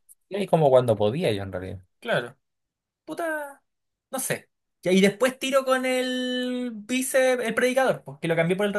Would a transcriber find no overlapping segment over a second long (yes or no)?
yes